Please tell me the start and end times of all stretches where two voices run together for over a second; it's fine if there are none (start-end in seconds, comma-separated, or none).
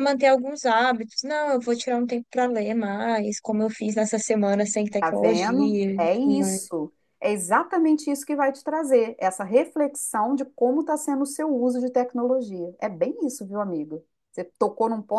5.0-6.6